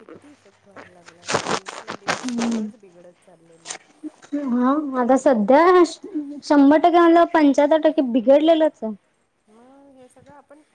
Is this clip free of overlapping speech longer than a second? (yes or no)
yes